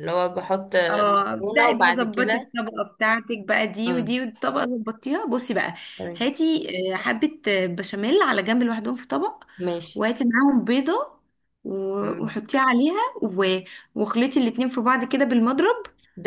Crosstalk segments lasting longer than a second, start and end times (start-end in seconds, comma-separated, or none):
1.2-2.5